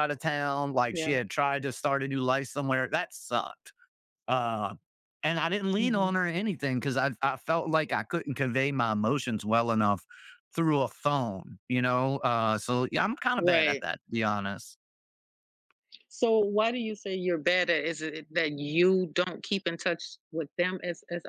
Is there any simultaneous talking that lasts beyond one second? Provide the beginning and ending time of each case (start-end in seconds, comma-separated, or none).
none